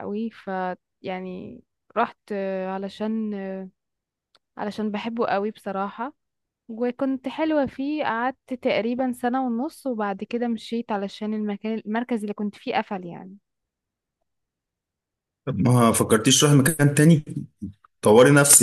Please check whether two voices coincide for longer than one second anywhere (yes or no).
no